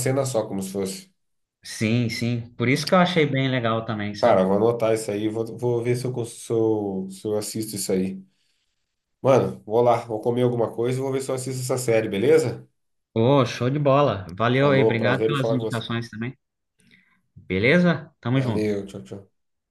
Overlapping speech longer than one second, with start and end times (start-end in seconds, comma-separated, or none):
14.6-15.8